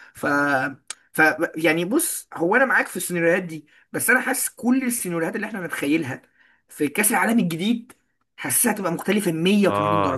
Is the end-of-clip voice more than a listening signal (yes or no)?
yes